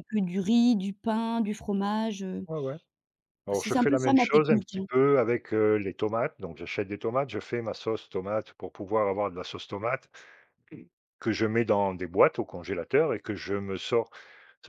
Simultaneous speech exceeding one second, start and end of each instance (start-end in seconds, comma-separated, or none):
3.5-4.8